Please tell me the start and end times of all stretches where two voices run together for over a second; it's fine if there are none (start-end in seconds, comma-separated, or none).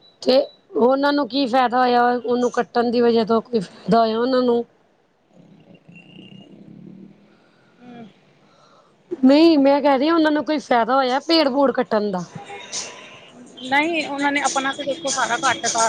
none